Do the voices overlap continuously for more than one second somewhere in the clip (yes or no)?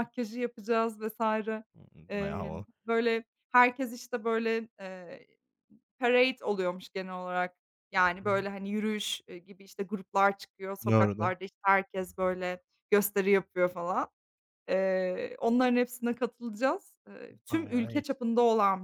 no